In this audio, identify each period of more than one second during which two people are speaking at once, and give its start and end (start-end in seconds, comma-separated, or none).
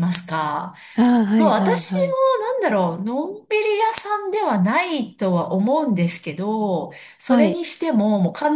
none